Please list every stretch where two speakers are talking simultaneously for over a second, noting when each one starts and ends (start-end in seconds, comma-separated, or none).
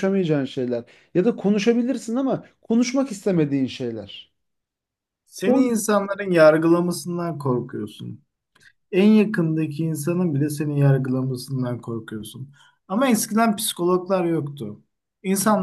none